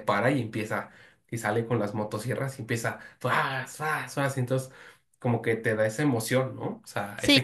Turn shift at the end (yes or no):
yes